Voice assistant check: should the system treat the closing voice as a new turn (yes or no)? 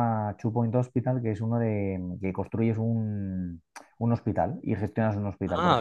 yes